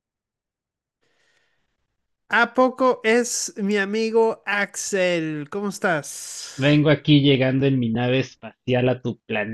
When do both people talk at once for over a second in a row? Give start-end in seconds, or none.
none